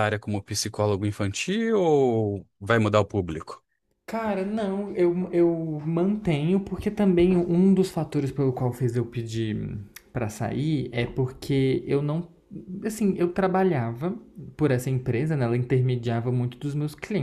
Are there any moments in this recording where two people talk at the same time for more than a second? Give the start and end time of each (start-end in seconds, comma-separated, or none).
none